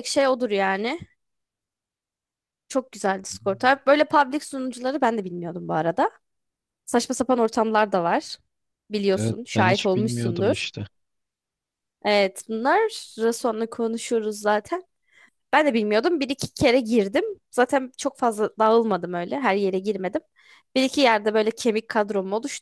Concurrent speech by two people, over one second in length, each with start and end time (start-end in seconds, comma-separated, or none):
9.1-10.7